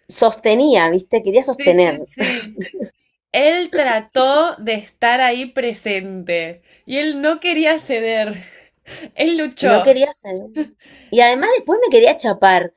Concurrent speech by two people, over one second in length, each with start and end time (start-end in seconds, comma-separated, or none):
none